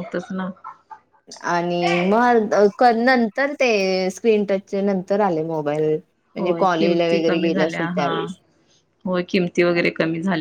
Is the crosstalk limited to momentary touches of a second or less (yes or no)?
no